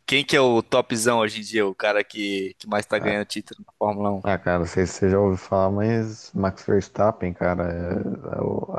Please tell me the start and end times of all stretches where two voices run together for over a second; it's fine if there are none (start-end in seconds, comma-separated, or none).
none